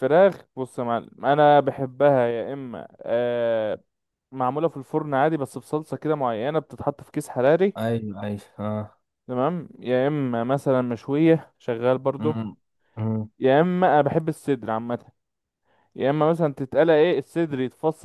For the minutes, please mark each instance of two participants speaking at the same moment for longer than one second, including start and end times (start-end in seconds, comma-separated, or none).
none